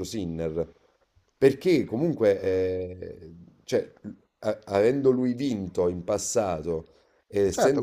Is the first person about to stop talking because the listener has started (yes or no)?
yes